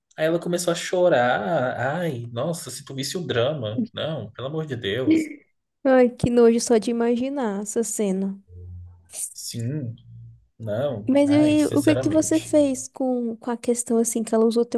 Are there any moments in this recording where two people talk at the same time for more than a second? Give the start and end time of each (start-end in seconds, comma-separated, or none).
11.1-12.6